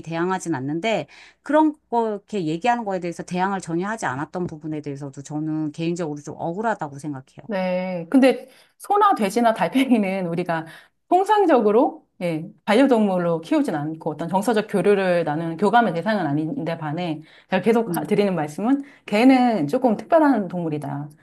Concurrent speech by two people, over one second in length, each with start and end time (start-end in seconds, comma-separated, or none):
none